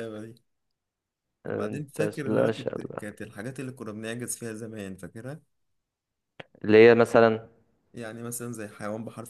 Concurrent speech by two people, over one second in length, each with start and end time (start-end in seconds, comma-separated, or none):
1.5-3.1